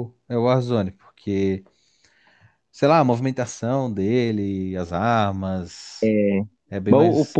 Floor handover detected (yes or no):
yes